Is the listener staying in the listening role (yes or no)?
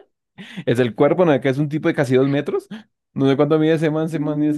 no